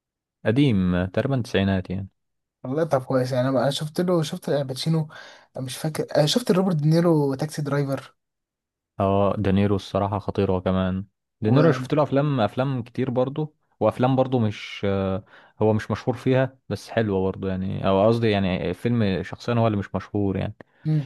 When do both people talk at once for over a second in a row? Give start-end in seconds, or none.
none